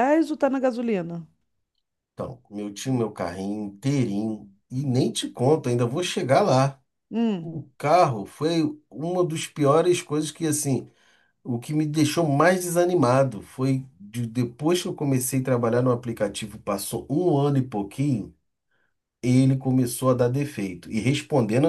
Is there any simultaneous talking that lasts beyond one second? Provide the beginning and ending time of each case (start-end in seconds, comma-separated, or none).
none